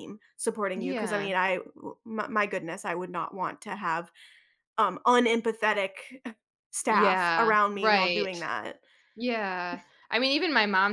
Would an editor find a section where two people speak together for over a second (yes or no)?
yes